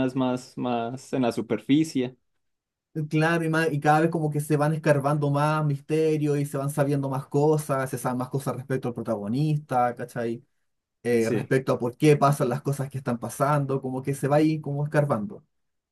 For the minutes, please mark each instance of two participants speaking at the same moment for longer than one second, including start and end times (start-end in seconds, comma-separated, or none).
none